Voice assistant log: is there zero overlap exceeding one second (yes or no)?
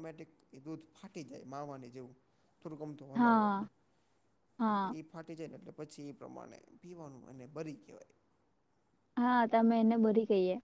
yes